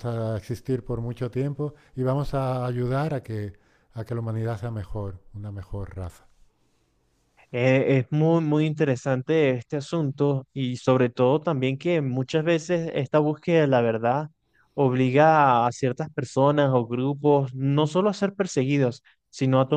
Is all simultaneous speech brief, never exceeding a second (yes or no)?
yes